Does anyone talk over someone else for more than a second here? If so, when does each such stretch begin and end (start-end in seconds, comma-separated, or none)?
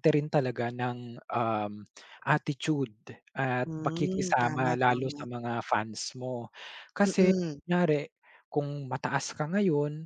3.6-5.2